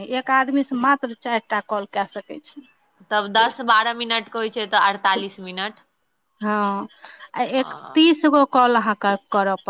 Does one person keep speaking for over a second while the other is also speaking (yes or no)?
no